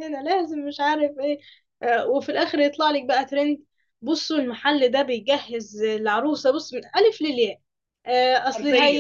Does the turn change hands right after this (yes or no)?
no